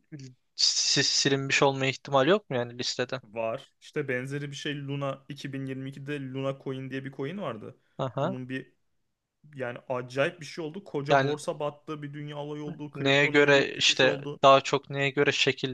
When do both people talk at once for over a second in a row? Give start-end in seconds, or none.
12.9-14.4